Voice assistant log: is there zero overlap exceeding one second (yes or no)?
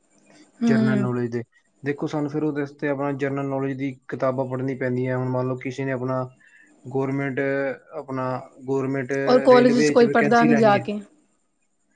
no